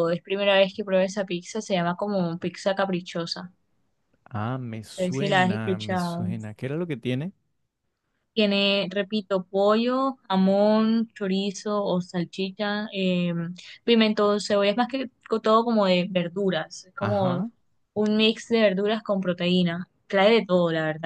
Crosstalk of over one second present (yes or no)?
yes